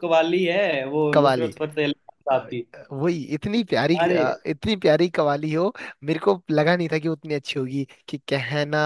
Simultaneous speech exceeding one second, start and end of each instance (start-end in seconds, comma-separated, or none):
none